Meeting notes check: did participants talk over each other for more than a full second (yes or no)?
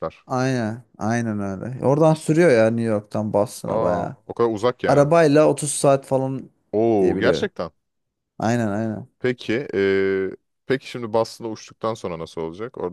no